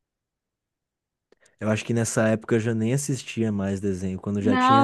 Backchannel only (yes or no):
no